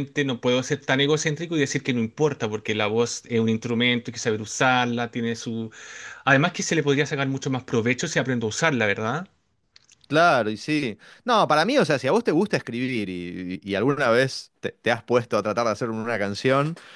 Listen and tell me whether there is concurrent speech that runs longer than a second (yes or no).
no